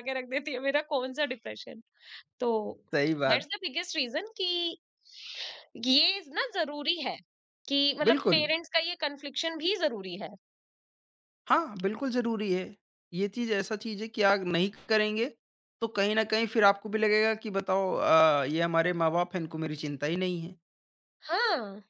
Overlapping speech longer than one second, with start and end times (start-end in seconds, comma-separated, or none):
none